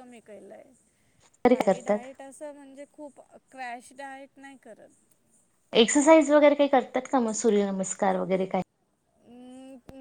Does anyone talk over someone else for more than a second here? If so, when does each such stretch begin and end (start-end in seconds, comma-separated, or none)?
none